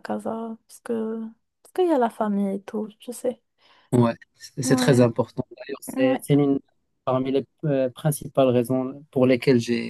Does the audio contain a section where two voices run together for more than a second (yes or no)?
no